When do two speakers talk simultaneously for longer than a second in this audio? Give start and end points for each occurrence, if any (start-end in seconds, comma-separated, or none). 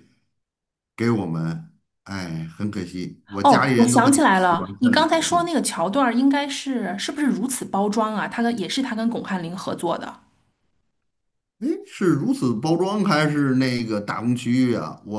3.4-5.5